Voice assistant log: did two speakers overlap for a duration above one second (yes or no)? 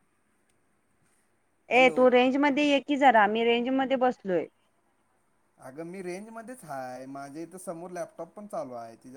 no